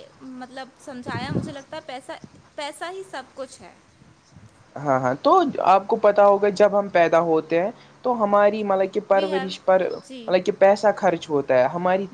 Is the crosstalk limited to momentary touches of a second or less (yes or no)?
yes